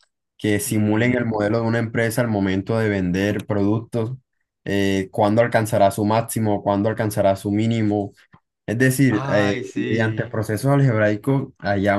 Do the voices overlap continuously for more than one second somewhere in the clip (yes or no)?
yes